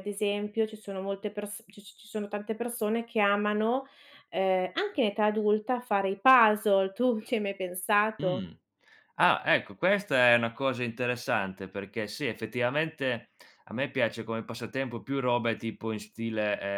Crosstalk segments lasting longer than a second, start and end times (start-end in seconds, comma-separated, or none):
none